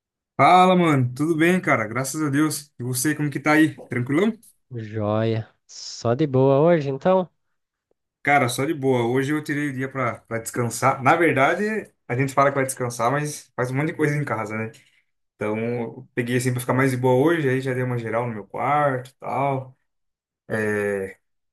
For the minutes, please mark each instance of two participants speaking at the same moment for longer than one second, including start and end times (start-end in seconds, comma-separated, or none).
none